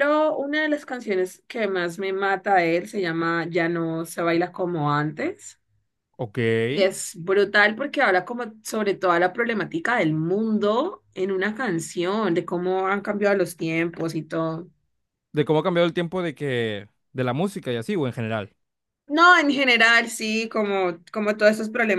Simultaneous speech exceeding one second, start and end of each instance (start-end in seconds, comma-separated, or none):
none